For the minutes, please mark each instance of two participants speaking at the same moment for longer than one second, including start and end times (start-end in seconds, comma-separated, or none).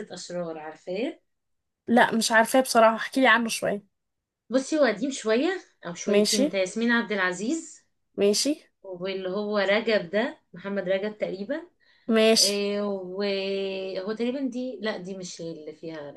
none